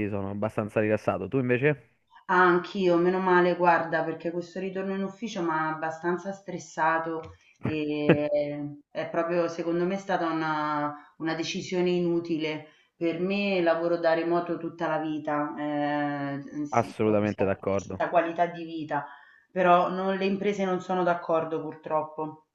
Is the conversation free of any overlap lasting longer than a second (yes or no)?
no